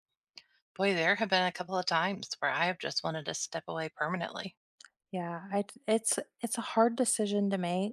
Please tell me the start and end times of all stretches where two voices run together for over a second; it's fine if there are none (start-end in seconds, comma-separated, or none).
none